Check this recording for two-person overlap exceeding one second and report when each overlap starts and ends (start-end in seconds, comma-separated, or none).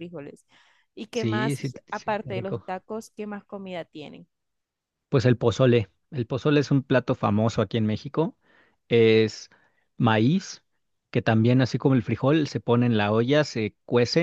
1.1-2.6